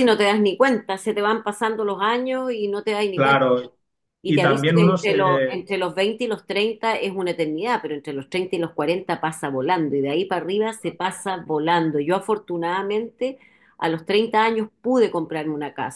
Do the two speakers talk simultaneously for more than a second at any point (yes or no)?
yes